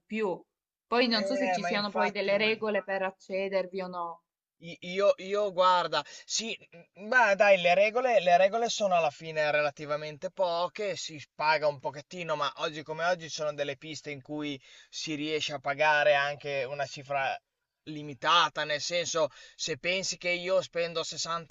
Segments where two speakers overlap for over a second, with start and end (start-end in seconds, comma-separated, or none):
1.1-2.7